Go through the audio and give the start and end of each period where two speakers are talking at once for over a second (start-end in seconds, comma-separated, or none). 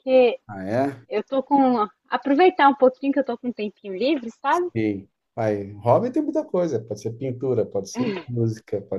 none